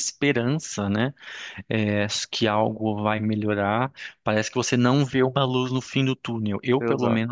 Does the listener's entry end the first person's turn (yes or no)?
no